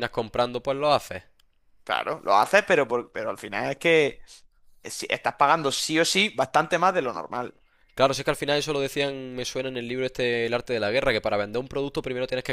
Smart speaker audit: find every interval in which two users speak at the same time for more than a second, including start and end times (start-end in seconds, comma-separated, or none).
none